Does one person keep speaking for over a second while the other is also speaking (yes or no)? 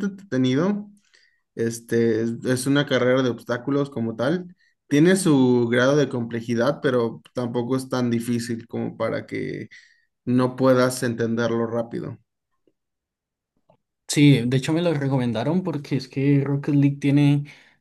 no